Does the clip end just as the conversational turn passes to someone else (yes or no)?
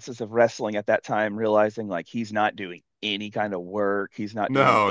yes